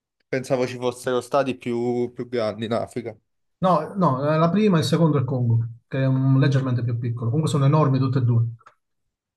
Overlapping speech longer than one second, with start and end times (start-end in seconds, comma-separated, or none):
none